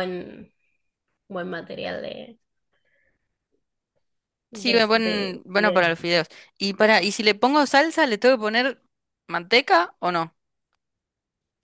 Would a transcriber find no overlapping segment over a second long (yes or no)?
no